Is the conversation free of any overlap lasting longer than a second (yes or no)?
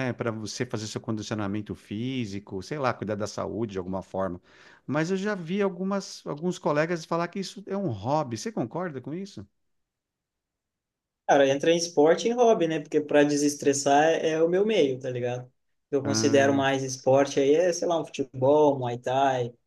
yes